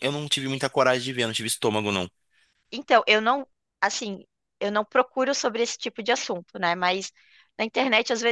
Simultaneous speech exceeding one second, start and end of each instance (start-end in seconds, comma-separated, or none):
none